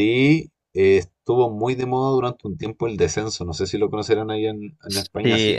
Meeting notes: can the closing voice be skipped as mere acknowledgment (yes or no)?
no